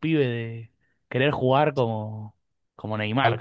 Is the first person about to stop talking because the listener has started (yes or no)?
yes